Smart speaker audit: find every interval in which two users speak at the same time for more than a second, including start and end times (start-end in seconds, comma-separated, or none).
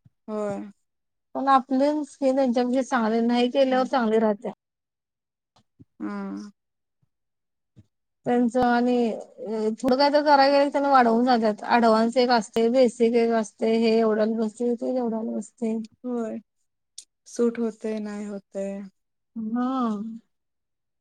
none